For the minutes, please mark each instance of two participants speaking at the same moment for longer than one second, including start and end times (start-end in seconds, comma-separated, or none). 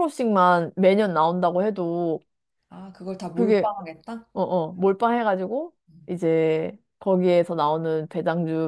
none